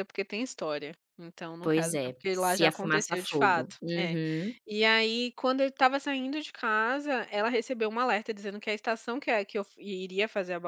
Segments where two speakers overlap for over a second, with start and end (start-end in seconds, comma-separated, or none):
1.6-4.2